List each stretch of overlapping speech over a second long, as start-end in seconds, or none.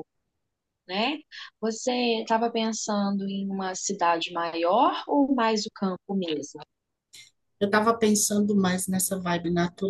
none